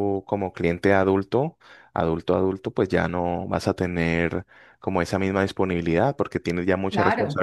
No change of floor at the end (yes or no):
yes